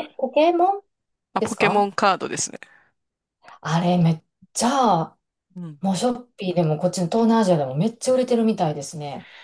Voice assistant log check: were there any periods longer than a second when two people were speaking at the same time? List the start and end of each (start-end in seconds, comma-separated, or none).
none